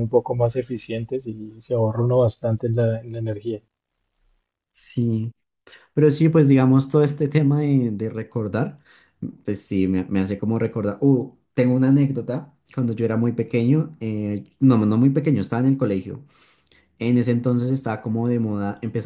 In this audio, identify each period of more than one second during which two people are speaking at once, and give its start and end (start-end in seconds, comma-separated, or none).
none